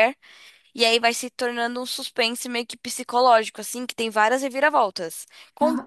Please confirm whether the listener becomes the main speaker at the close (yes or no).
no